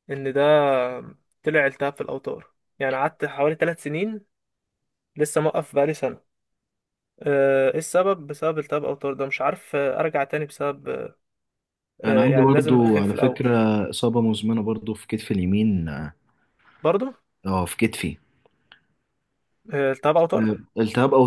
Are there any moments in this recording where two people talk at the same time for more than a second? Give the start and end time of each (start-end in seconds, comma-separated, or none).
12.0-13.5